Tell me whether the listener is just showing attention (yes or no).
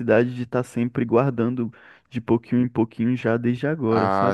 no